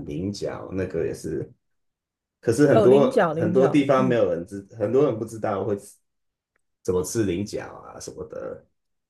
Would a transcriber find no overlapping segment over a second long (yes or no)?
no